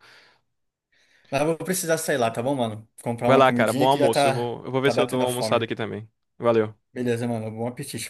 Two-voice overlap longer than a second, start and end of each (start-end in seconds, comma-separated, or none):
3.2-5.7